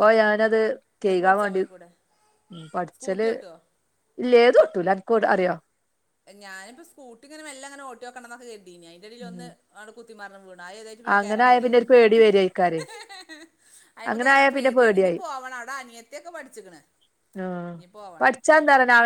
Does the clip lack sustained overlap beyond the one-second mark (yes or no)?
yes